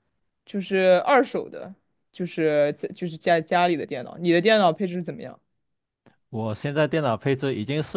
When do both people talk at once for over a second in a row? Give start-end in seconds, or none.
none